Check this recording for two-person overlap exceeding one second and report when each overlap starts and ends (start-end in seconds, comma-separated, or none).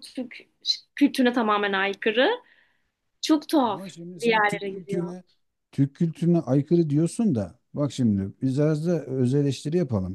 3.6-5.2